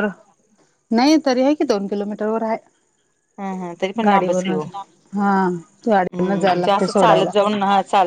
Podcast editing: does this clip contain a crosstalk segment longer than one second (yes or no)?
yes